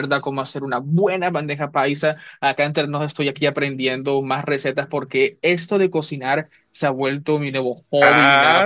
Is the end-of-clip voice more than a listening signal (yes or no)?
yes